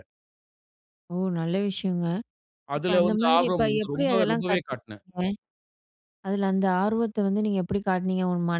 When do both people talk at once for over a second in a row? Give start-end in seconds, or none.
2.8-5.0